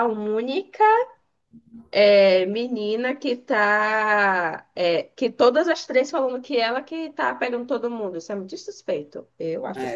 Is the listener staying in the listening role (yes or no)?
no